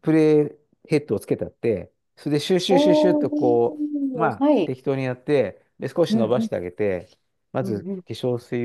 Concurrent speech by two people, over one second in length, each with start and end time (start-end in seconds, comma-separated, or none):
2.7-4.7